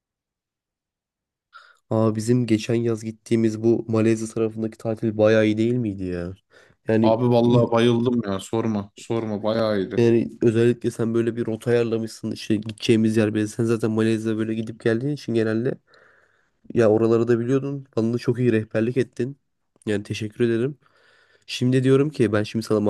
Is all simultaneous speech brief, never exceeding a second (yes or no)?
yes